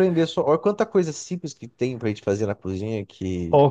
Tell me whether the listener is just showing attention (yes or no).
no